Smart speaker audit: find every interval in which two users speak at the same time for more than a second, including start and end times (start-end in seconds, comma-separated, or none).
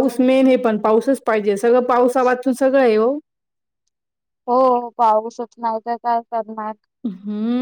none